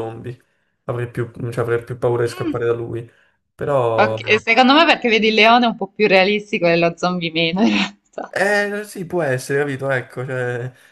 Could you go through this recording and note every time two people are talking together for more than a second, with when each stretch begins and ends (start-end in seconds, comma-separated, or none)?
none